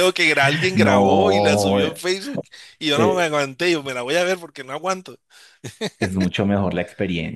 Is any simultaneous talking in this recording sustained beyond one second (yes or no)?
yes